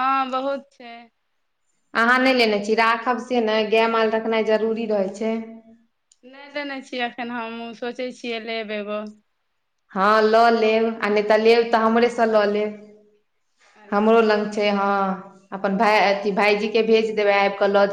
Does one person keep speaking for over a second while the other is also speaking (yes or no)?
no